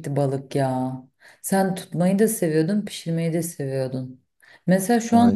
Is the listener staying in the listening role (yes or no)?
yes